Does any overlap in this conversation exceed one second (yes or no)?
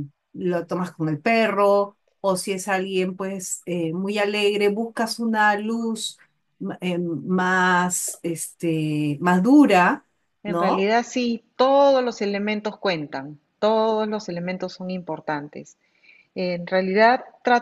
no